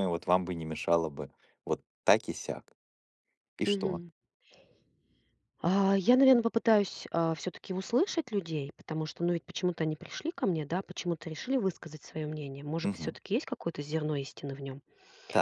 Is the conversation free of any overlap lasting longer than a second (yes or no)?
yes